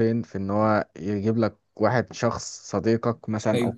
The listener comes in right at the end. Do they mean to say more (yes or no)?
no